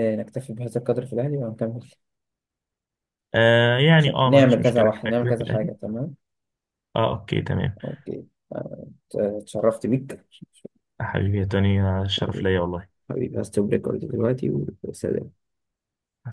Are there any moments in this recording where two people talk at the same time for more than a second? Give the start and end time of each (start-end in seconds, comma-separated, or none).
4.0-5.7